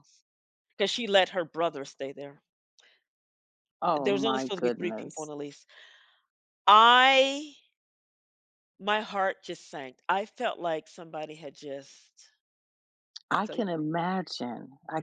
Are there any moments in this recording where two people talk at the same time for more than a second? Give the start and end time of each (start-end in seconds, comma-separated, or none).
3.9-5.3